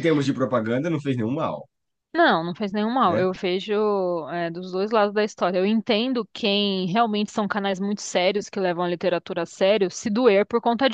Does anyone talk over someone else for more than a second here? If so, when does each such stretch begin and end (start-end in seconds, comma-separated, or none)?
none